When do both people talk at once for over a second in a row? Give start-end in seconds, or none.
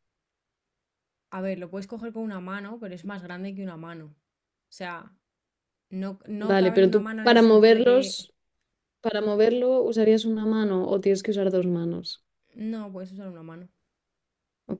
6.5-8.3